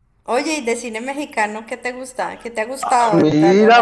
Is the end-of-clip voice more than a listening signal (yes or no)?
yes